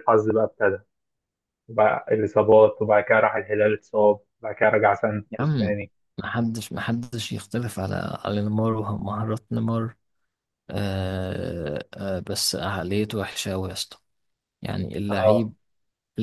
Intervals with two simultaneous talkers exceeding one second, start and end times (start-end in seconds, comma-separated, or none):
none